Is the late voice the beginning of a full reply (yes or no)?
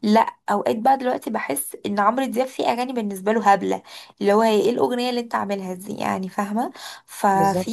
no